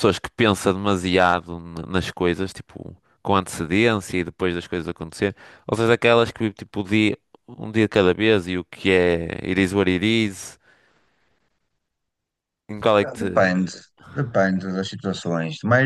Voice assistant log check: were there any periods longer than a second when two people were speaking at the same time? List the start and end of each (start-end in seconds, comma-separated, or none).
none